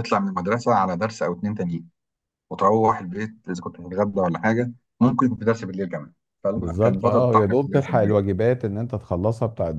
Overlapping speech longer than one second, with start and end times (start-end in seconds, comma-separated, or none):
6.5-8.2